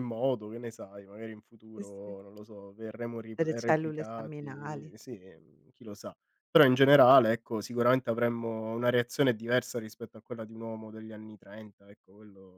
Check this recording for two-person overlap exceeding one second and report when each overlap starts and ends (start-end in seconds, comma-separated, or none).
3.4-4.9